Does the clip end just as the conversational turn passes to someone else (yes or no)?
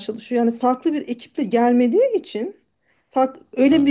no